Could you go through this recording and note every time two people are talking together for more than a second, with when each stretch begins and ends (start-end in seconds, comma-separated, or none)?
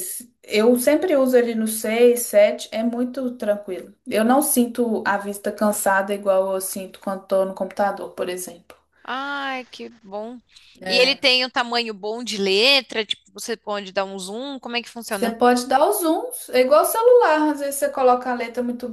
none